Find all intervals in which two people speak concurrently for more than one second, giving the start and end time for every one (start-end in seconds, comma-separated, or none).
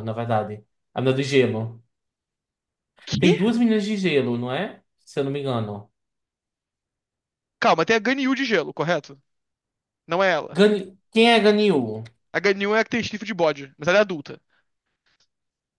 none